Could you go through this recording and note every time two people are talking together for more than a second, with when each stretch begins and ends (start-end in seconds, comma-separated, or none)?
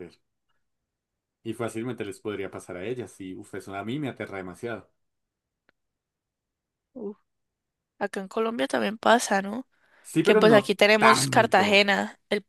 10.2-11.9